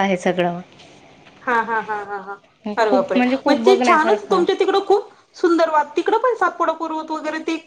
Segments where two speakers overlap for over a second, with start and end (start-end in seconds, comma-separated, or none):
2.8-4.4